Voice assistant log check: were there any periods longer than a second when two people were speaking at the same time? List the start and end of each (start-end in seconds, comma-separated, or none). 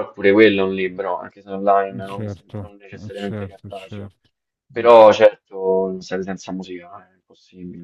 2.1-4.1